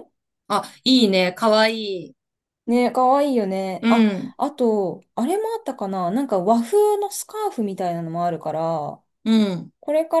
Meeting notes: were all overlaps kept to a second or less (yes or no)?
yes